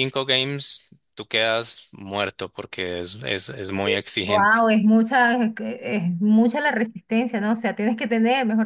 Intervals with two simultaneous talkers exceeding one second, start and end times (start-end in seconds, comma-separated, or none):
none